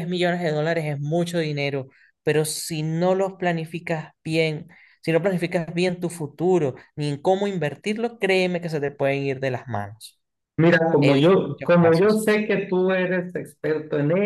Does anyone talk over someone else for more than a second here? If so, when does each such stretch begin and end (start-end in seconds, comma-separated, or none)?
11.0-12.2